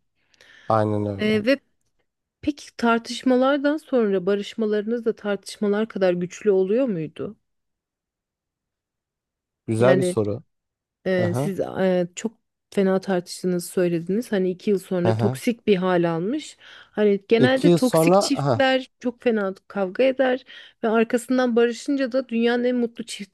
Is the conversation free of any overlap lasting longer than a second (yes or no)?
no